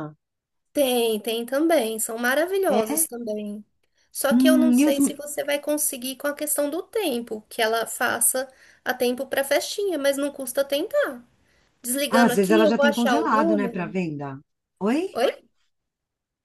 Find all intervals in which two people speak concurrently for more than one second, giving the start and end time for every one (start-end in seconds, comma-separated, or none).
12.1-13.9